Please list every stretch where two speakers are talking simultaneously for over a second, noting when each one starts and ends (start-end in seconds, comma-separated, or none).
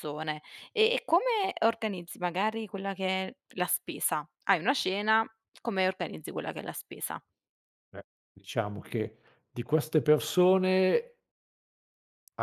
none